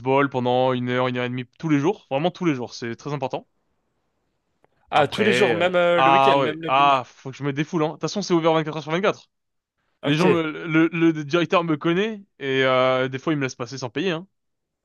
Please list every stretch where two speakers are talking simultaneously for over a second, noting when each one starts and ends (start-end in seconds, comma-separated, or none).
4.9-7.0